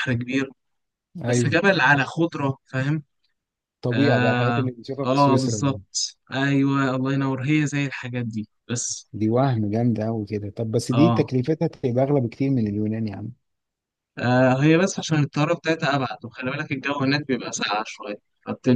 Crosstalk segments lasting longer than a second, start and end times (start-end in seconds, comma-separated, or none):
3.9-5.8